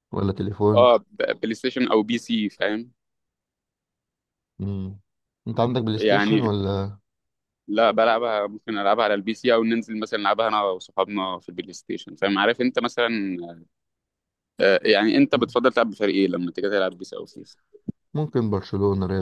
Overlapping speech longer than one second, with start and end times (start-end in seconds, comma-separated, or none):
none